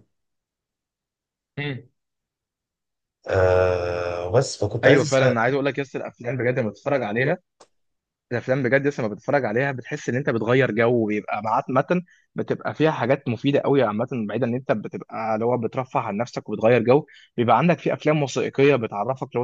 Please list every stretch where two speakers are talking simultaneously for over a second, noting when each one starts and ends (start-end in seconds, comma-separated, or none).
none